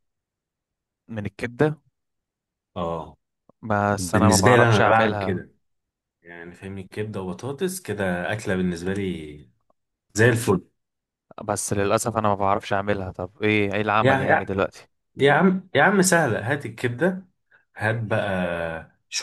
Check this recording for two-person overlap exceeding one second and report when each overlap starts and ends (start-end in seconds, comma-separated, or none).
4.0-5.5